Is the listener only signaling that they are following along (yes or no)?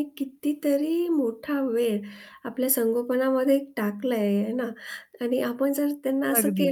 yes